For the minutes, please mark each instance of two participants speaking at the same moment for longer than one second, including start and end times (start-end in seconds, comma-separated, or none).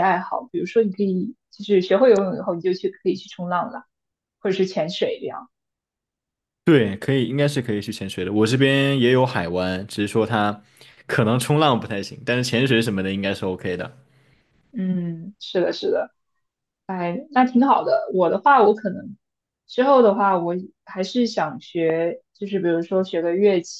none